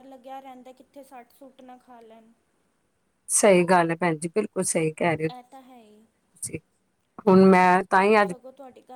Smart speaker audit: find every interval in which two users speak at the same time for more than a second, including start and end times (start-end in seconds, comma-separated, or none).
none